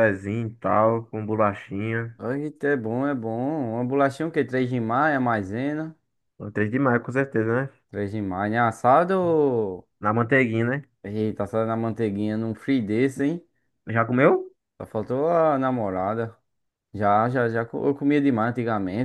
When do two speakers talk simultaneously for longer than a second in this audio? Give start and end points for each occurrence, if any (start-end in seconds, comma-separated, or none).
none